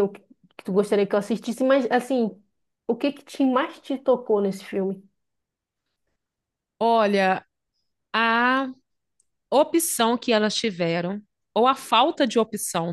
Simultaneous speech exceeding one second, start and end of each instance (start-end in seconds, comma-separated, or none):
none